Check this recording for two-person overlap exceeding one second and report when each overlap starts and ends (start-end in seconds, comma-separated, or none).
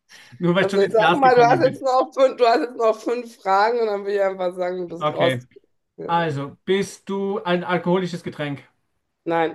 0.6-1.8